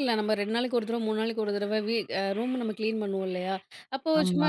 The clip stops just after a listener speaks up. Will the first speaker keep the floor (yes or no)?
yes